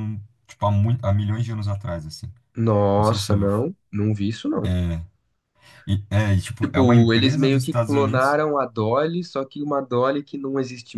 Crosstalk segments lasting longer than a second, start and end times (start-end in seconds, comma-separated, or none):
6.6-8.4